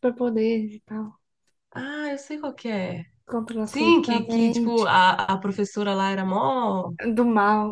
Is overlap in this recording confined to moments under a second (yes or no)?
no